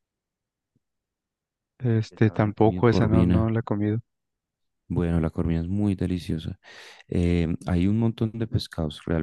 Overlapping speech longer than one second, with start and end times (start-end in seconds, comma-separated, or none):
1.8-3.5